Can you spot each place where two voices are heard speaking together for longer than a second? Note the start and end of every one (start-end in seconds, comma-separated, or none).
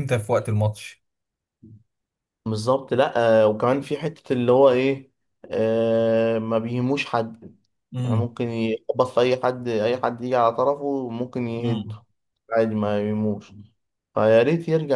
none